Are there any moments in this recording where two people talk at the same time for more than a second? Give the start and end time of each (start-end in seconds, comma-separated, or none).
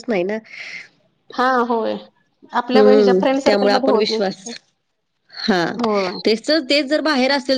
2.7-4.3